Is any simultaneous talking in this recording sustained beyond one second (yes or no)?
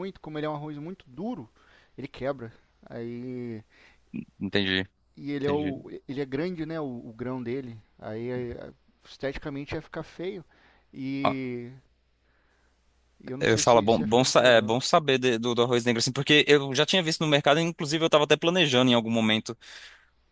yes